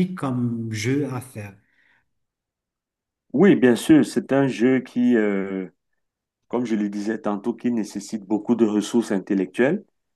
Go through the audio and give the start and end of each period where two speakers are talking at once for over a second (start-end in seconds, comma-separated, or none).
none